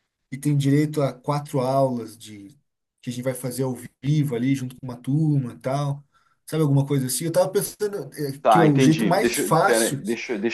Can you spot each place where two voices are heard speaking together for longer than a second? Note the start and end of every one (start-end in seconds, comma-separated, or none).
8.4-10.0